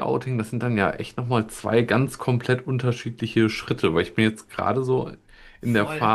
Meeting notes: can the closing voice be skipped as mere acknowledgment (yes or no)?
yes